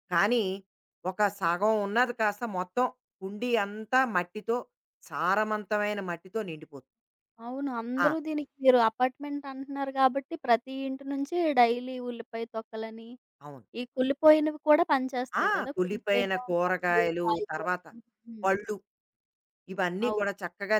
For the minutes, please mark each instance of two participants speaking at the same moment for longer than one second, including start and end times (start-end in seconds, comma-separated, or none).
15.4-17.7